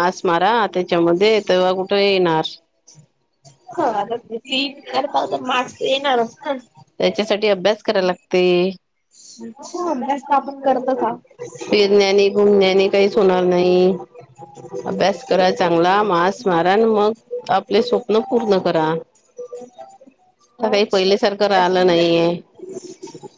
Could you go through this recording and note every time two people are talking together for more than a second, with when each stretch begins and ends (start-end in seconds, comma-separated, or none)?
20.6-22.1